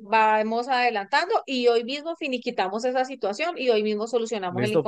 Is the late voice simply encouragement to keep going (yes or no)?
no